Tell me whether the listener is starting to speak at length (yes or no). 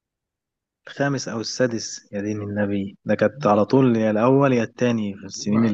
yes